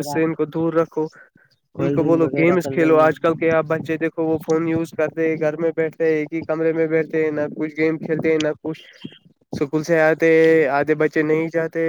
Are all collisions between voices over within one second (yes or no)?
no